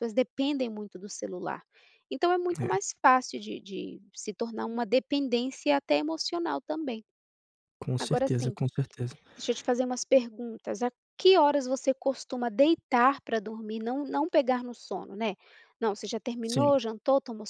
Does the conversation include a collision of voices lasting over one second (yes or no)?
no